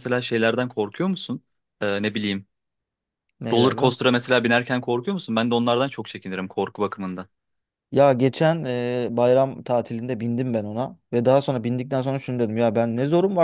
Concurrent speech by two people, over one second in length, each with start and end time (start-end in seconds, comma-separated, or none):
none